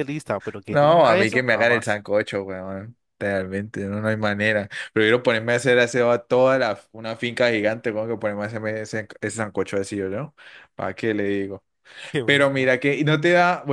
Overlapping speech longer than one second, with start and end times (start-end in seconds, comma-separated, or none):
0.7-2.0